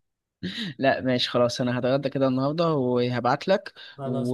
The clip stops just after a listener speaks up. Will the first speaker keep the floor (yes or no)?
yes